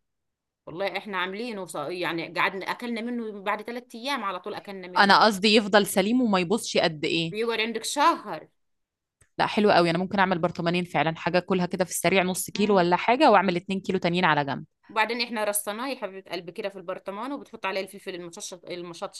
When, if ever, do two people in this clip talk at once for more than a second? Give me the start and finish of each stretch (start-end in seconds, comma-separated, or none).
none